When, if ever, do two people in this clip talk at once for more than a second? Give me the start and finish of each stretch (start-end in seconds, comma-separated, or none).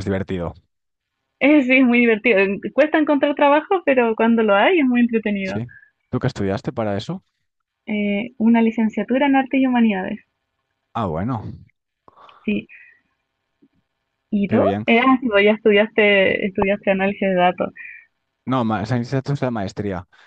none